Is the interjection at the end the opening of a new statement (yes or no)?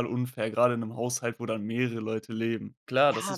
yes